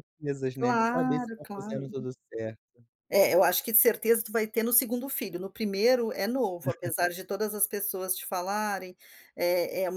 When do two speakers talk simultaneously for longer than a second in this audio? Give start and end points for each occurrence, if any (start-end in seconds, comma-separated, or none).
0.6-1.8